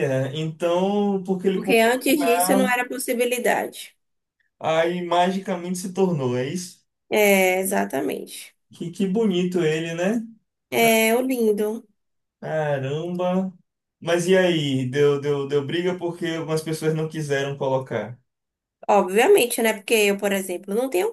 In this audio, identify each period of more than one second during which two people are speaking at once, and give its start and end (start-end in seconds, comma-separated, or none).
1.5-2.8